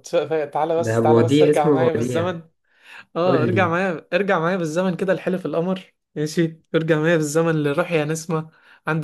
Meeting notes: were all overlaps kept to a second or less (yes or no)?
no